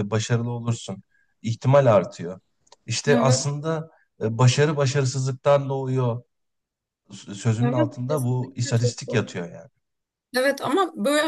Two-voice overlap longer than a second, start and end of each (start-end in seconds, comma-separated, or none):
7.6-9.3